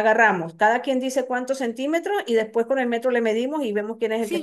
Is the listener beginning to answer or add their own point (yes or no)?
yes